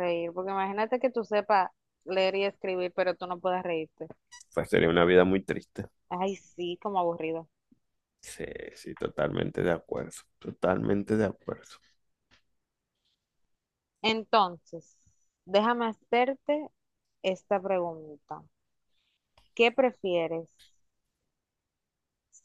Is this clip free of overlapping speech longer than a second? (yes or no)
yes